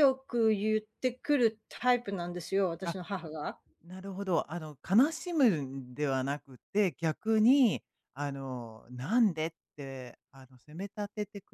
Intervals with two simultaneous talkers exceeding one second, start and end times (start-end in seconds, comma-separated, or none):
none